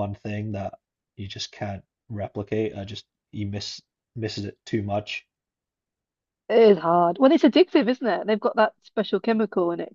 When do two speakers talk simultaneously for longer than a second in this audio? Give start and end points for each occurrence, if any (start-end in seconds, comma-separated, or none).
none